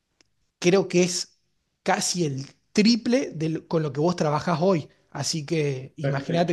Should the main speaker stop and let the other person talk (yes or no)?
yes